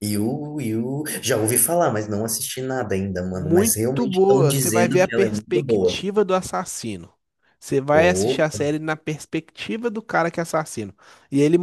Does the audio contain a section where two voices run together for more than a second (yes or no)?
yes